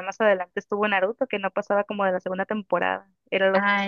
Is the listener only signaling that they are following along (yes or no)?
no